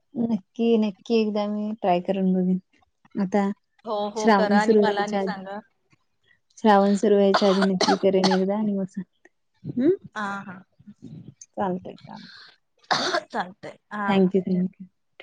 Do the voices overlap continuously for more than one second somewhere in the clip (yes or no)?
yes